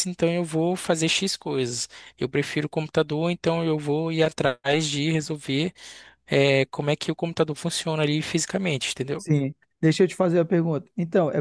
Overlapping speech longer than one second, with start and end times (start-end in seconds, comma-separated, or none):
none